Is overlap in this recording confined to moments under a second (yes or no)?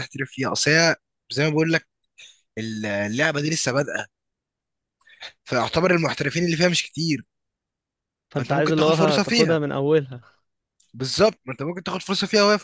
no